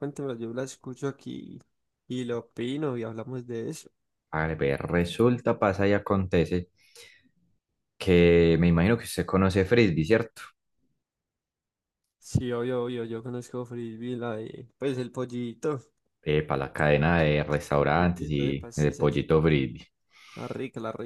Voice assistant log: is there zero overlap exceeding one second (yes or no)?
no